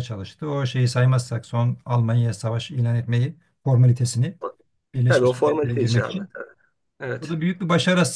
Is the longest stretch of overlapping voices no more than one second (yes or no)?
no